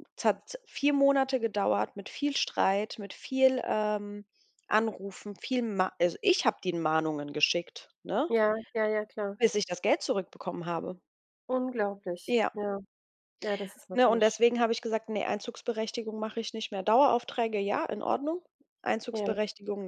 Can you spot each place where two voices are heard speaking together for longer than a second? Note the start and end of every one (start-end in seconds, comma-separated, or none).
none